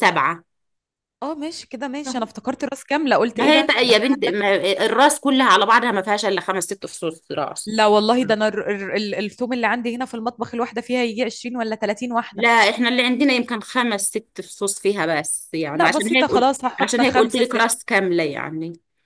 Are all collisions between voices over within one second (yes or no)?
no